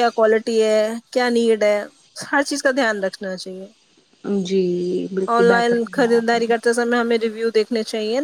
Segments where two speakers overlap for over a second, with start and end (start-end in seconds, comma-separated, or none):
5.3-6.7